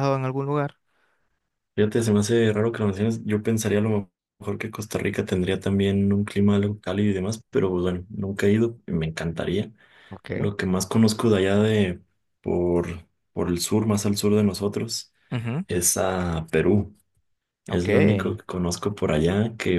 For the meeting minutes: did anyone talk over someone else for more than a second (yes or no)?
no